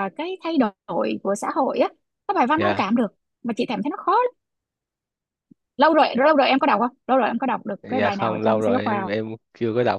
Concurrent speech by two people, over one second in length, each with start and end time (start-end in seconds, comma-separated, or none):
7.8-9.1